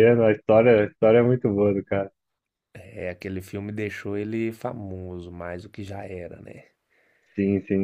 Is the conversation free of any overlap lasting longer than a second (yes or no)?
yes